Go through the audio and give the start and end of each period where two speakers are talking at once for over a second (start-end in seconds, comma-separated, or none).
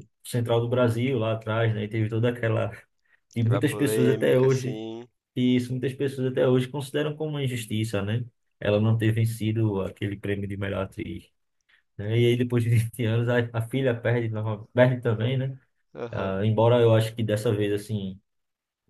3.4-4.8